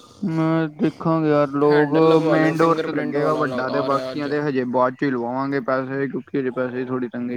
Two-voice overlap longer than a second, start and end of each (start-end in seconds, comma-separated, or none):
1.7-4.3